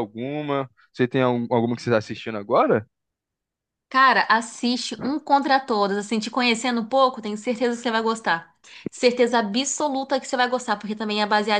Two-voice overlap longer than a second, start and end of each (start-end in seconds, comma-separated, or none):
none